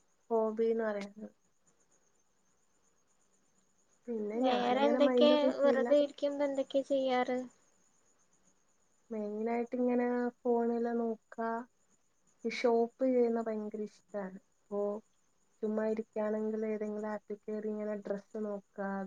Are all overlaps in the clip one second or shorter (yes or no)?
no